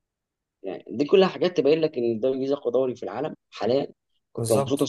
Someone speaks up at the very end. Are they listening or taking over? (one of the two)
listening